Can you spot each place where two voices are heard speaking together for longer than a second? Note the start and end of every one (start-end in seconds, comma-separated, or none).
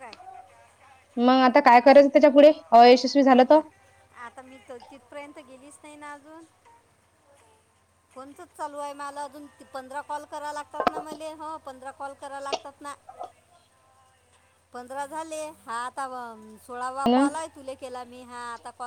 none